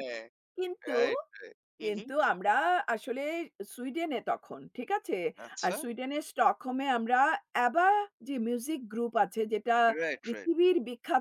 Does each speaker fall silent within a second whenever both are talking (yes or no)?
yes